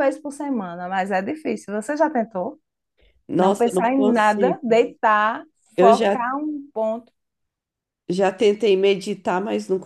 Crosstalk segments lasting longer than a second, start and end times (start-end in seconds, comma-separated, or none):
3.4-4.8